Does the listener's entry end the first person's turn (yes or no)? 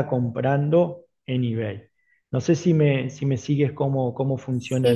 yes